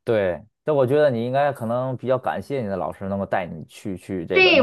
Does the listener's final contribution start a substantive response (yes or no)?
yes